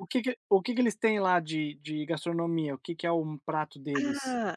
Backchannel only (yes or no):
no